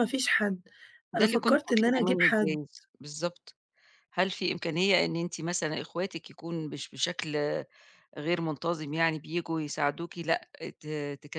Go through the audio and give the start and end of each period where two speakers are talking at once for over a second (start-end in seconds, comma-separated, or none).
1.1-2.6